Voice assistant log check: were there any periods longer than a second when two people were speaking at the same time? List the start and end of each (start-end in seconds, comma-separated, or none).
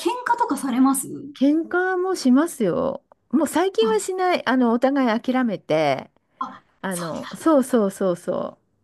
none